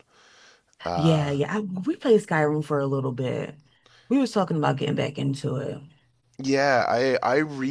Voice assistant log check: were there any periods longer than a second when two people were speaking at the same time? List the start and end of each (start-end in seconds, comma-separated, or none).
none